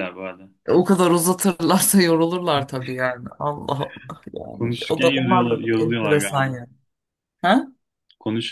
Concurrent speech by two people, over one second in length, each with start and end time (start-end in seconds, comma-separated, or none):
4.5-6.5